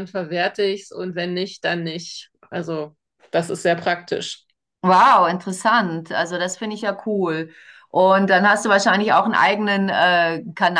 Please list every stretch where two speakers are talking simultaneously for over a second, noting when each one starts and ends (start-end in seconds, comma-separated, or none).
none